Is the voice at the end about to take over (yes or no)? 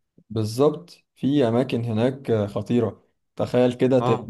no